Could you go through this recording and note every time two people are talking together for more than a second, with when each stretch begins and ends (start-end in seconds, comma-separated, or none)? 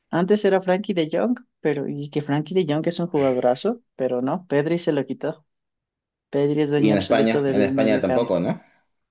6.8-8.3